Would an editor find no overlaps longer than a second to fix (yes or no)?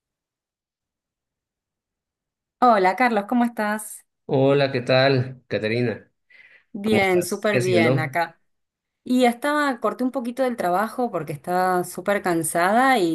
no